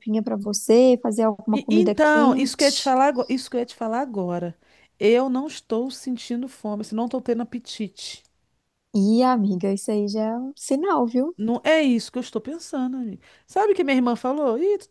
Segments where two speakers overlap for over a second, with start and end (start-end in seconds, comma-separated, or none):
1.5-3.0